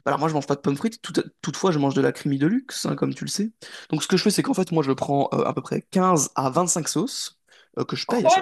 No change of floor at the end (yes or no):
no